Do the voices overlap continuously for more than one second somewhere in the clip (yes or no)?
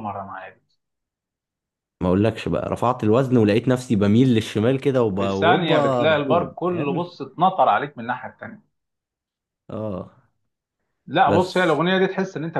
yes